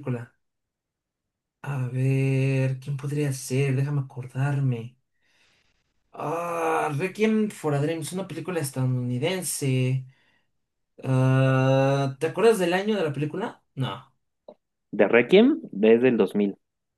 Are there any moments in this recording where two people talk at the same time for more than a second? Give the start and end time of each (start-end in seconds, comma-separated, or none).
none